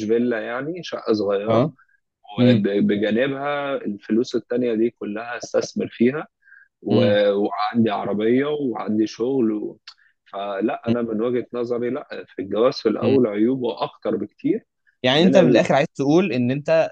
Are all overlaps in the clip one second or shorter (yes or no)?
yes